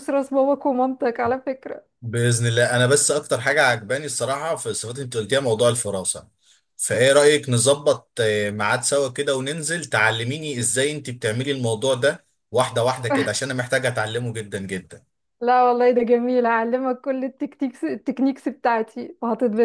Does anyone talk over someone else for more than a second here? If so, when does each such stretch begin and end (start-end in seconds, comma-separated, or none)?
none